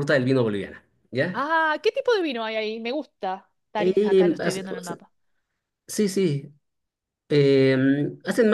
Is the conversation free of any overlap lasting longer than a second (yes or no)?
no